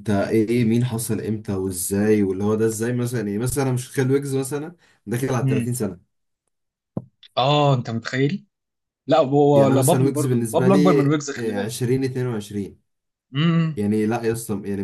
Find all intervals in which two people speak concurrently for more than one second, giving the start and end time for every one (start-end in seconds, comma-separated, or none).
9.5-11.7